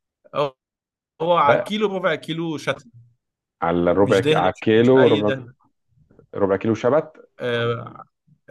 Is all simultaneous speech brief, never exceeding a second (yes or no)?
no